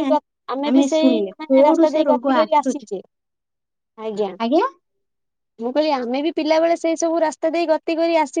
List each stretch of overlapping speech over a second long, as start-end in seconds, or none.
0.9-2.9